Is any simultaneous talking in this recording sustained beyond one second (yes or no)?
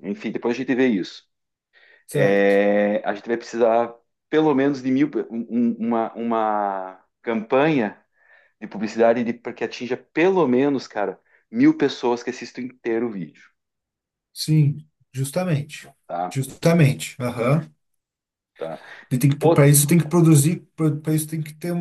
no